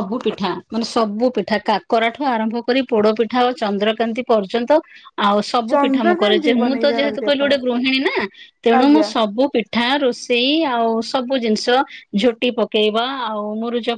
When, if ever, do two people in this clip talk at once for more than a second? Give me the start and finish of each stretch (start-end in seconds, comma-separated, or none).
5.7-7.5